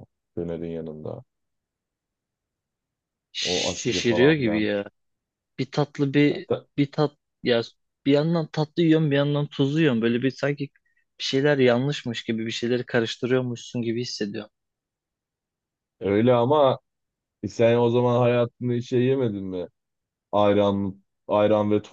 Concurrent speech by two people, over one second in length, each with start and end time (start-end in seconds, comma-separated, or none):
3.4-4.7